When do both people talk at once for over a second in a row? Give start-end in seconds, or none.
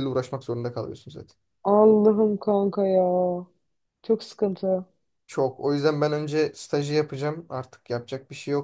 none